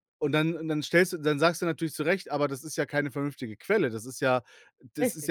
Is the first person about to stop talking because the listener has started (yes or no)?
no